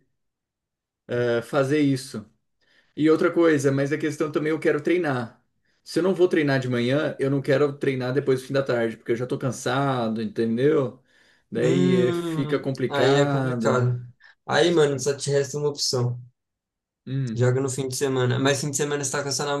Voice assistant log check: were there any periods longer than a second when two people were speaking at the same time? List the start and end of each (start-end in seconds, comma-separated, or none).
11.5-13.9